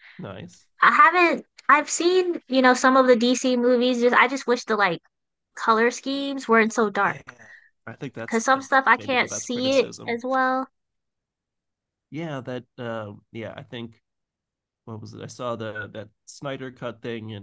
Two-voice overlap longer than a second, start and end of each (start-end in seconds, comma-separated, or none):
8.2-10.2